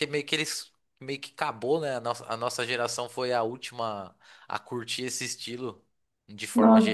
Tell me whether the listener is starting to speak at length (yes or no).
yes